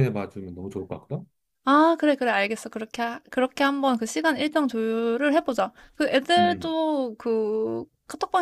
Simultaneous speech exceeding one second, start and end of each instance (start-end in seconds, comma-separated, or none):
none